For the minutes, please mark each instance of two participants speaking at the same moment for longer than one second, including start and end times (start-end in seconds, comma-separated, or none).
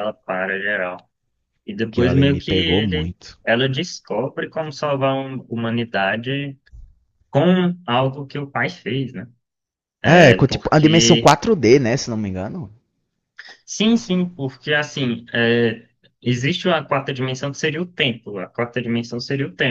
1.9-3.4, 10.1-11.3